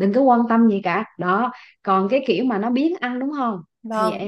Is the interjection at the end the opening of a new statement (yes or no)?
yes